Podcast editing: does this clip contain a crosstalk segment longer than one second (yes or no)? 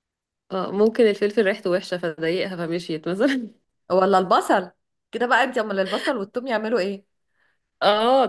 no